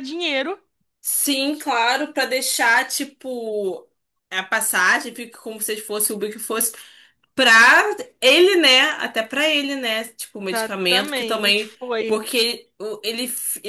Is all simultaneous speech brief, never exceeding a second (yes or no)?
no